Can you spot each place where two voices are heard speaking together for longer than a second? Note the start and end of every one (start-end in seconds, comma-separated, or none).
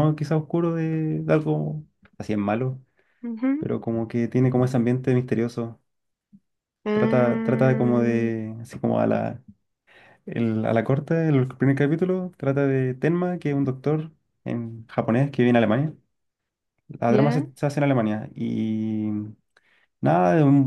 6.9-8.3